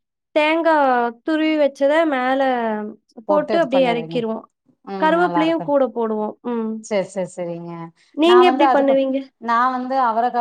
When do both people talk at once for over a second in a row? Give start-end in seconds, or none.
none